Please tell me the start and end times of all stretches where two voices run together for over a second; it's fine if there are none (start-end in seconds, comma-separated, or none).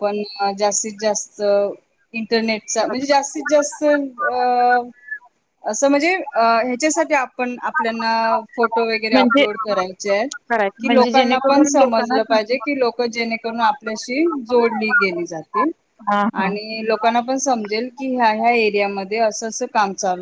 10.8-12.2